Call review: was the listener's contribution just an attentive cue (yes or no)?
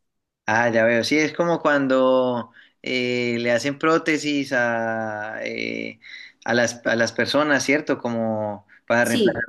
yes